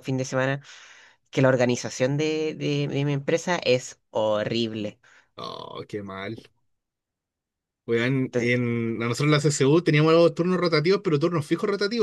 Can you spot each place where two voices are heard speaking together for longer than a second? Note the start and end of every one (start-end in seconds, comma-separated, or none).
none